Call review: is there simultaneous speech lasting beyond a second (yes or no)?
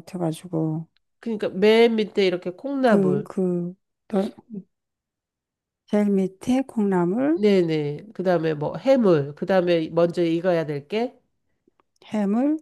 no